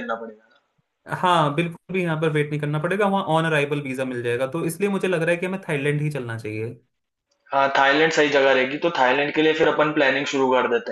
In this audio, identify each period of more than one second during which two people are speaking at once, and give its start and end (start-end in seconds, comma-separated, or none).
none